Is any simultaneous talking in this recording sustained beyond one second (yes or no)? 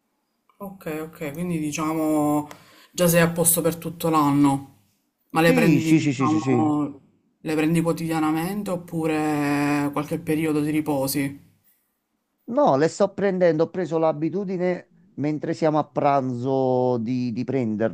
yes